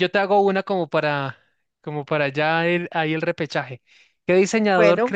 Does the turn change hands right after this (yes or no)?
no